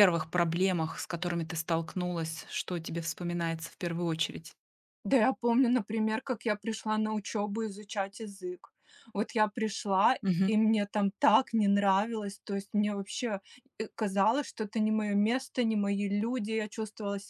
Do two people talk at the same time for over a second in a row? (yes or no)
no